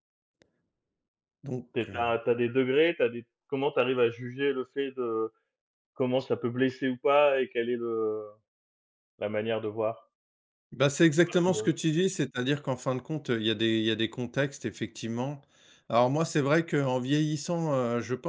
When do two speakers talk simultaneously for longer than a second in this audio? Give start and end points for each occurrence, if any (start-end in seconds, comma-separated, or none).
none